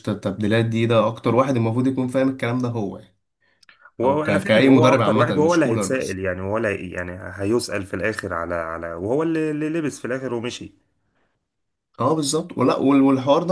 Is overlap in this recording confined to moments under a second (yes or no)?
no